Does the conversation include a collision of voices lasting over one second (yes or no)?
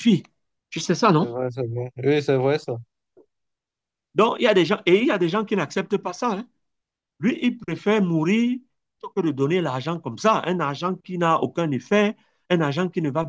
no